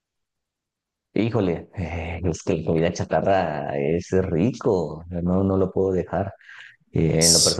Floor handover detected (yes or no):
no